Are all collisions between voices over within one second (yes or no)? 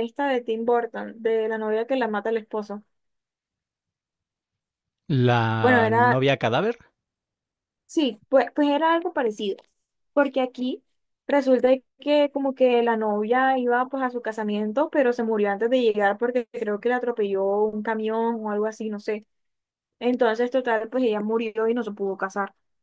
yes